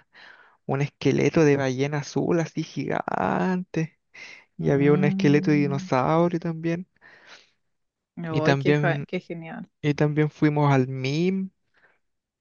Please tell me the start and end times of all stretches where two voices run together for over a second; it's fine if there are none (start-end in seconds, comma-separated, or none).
4.6-5.9